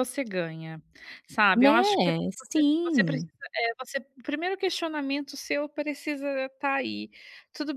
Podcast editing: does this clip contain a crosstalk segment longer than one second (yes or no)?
yes